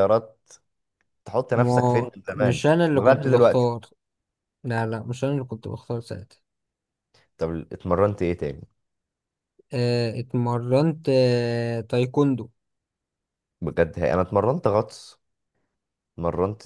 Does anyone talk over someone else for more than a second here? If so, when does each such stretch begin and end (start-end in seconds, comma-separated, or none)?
1.5-3.7